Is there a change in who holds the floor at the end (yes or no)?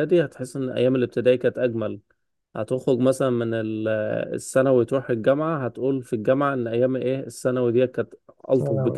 no